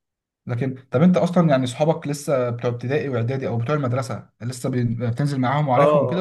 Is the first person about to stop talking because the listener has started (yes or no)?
yes